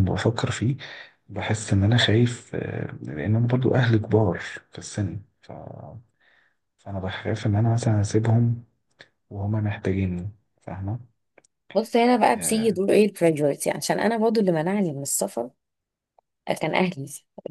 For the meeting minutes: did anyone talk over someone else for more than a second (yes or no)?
no